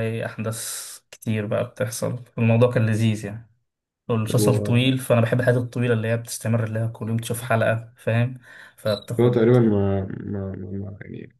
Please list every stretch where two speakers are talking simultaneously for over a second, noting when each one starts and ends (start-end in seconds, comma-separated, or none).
none